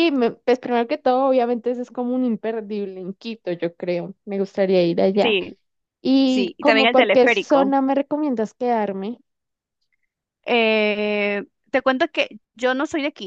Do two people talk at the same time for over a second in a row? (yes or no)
yes